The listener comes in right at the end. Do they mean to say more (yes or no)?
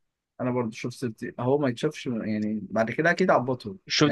yes